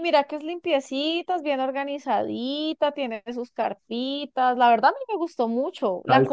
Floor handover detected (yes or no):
yes